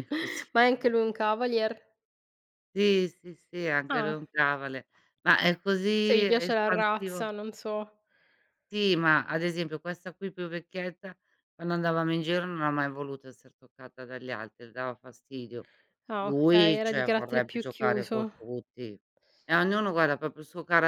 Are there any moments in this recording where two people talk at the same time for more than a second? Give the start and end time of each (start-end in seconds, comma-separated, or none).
5.9-7.3, 16.2-18.3